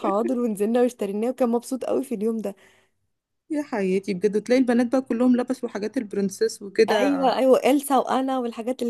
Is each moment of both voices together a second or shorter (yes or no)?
yes